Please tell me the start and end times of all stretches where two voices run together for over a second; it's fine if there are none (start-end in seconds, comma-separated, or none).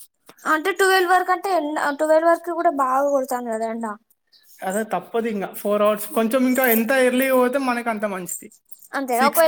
none